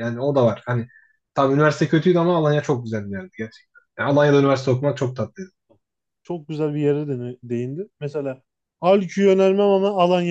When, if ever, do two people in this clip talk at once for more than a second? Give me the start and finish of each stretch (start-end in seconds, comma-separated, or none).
none